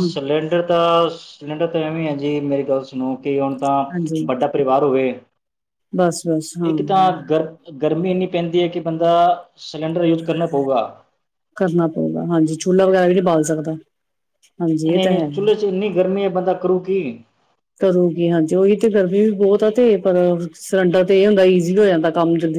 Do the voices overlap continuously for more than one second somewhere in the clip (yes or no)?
no